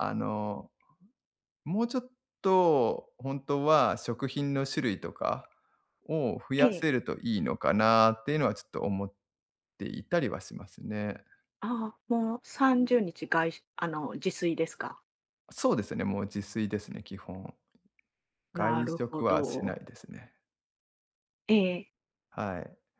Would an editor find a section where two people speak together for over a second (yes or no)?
yes